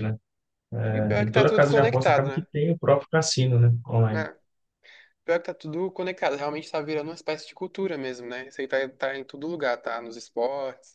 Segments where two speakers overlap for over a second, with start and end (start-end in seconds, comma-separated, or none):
0.9-2.5